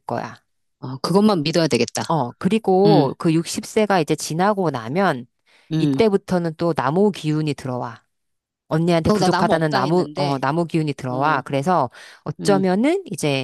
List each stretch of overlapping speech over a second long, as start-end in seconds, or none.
9.1-10.4